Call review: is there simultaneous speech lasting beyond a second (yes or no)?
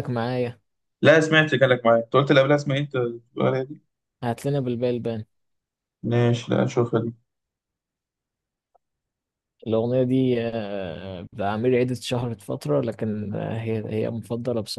no